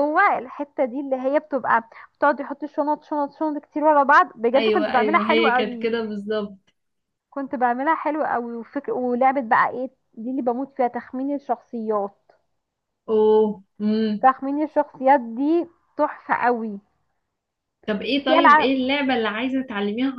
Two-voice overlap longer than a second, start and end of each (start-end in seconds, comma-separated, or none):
4.5-5.9